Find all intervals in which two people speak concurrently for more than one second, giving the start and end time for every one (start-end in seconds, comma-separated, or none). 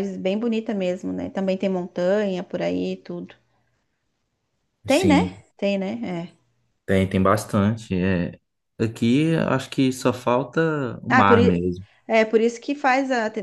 none